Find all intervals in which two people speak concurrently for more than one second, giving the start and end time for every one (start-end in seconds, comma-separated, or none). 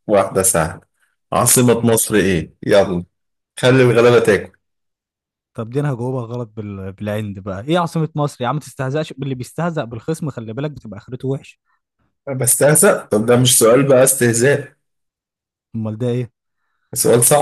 none